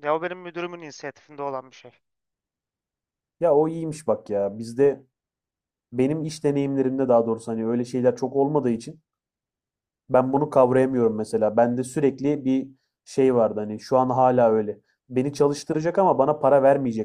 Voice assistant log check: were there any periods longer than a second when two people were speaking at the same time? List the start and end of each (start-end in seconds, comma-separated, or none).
none